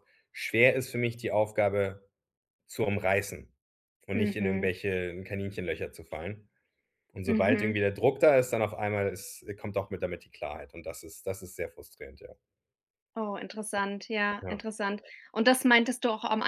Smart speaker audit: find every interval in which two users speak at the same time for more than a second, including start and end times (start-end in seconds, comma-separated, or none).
none